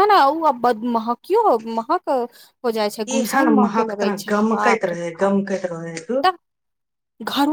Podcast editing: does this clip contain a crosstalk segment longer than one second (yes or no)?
yes